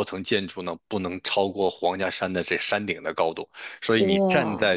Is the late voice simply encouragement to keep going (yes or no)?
yes